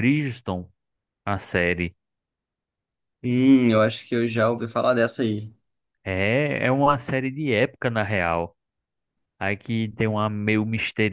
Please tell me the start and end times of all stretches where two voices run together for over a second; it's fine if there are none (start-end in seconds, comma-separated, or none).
none